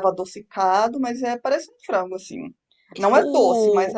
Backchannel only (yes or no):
yes